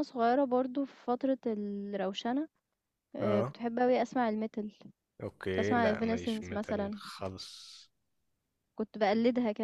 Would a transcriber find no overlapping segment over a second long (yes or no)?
no